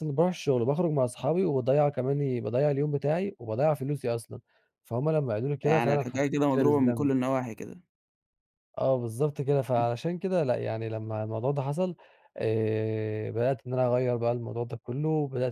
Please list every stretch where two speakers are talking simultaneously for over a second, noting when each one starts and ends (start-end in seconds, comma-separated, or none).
5.6-7.1